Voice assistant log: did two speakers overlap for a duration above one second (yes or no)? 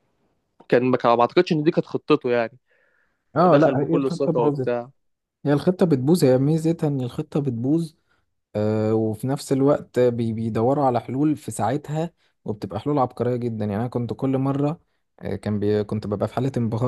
yes